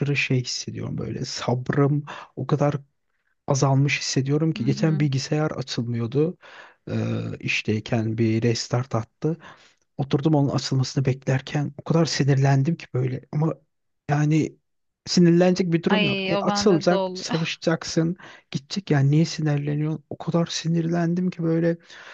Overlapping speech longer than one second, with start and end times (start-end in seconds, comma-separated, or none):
15.9-17.3